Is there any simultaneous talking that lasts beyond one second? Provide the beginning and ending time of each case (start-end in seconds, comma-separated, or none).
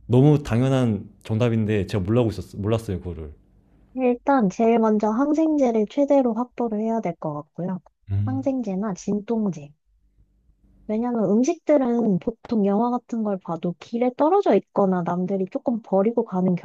none